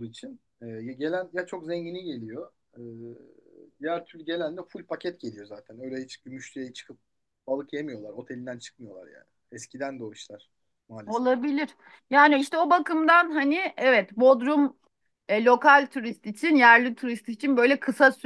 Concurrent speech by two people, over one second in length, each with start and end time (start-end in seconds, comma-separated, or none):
none